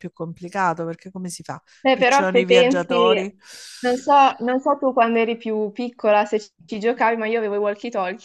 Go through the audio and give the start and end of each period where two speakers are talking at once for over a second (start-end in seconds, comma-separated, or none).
1.8-3.2